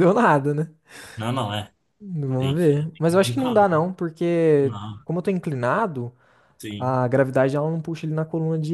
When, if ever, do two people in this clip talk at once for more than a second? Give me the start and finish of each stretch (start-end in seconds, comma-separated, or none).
2.4-3.7